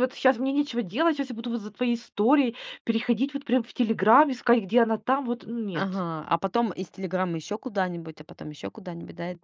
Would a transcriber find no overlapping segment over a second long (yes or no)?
yes